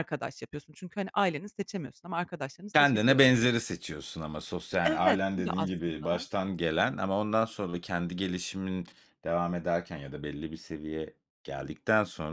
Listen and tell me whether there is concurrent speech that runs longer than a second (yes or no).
yes